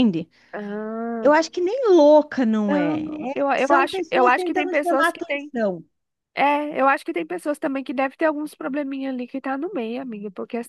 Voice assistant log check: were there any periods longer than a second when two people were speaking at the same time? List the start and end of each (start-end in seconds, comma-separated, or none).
2.7-5.5